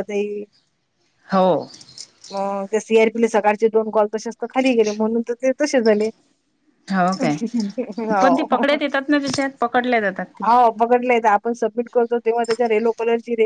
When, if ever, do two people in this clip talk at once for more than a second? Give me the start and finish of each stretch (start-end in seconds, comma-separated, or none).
none